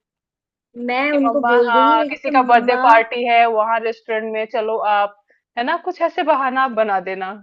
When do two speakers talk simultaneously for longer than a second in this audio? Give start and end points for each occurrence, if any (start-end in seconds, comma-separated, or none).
1.1-2.8